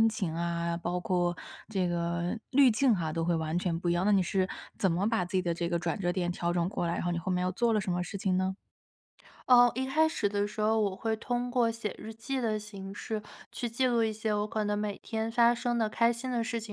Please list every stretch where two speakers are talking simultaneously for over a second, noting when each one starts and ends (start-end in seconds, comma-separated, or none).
none